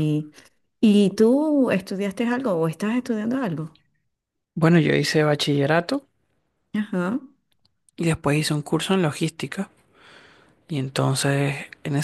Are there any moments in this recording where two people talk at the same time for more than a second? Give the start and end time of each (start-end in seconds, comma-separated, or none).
none